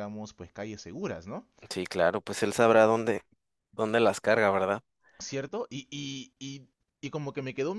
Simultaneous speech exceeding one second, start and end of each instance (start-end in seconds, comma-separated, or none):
none